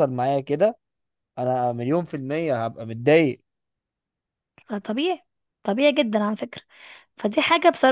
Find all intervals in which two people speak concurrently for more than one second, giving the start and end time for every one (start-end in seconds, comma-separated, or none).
none